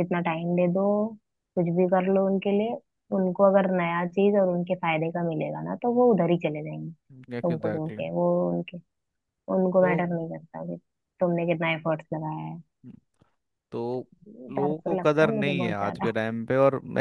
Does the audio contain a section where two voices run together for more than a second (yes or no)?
yes